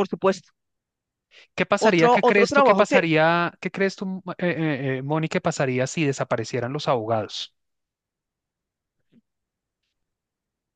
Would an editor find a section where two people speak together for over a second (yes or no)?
yes